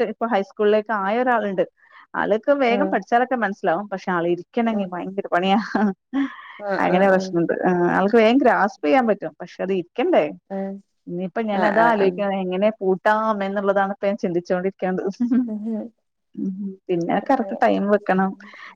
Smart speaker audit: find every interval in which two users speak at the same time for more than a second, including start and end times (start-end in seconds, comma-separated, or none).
none